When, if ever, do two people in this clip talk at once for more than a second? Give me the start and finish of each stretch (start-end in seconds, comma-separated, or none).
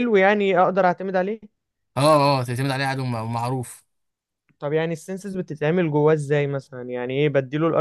none